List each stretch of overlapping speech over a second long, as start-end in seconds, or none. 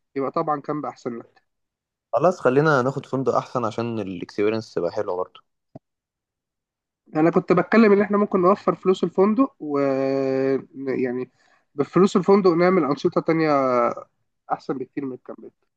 none